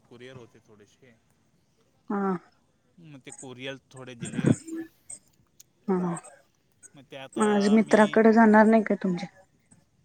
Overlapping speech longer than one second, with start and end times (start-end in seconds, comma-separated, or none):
none